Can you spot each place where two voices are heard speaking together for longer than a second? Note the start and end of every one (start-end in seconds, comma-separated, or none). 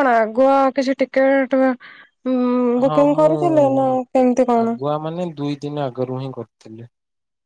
none